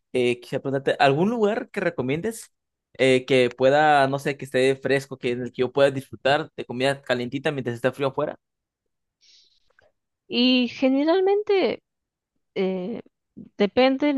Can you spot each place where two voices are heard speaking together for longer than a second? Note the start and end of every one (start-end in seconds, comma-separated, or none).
none